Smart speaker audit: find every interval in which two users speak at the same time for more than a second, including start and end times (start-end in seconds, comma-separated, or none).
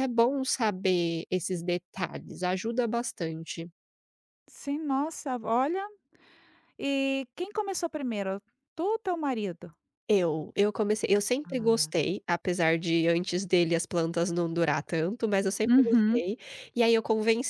none